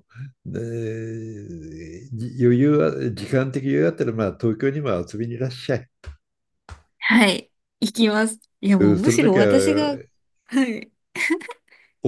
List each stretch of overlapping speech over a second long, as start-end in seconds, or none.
8.8-10.0